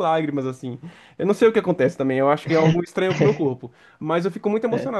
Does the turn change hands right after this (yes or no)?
no